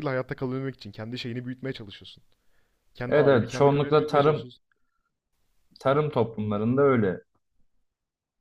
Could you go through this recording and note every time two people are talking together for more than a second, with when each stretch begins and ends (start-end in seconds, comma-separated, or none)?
3.1-4.5